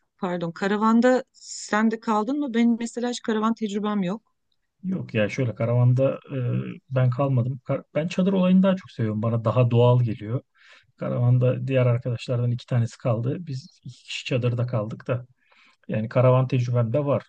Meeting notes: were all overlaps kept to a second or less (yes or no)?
yes